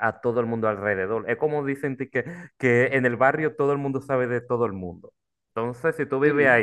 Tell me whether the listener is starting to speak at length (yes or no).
no